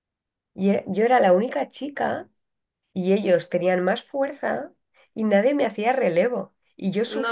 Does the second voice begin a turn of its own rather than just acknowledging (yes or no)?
no